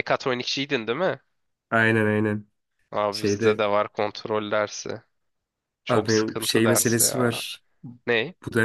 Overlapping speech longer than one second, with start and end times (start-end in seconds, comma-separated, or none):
5.9-7.4